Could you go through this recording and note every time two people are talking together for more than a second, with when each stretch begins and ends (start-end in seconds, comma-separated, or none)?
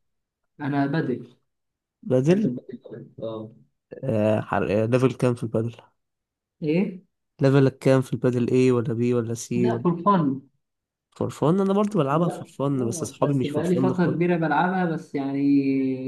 12.1-14.2